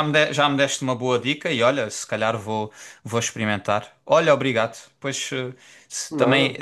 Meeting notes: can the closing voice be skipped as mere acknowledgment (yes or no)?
yes